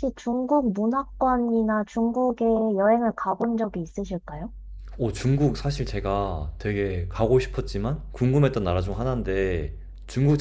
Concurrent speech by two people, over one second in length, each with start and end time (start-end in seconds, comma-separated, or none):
none